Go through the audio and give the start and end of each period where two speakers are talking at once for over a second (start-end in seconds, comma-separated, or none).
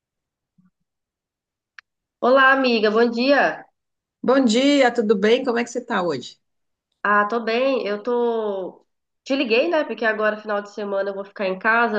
none